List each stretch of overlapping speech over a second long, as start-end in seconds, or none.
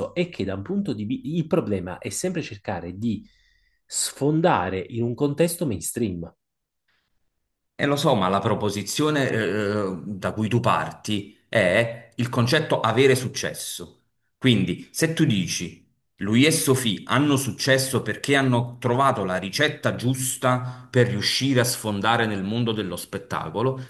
none